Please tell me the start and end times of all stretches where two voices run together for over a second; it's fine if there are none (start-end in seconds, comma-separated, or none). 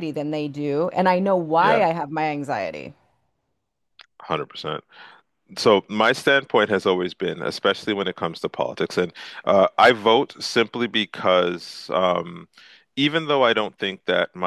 none